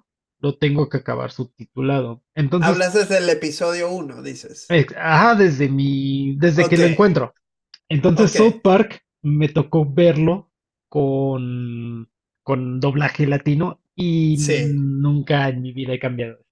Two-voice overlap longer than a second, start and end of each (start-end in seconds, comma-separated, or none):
none